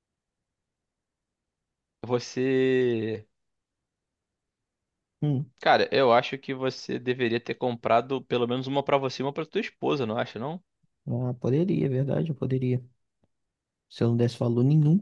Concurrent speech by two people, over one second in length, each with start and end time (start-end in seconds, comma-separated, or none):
none